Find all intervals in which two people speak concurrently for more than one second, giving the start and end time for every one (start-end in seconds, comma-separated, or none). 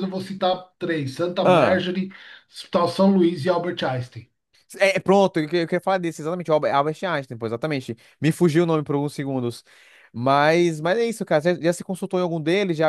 none